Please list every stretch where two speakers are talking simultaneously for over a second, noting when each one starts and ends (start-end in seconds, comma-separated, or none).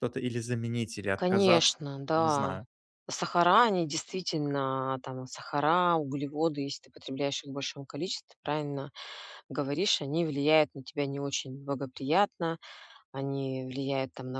1.1-2.6